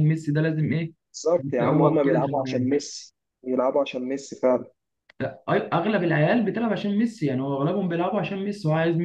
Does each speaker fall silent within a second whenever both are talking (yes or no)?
no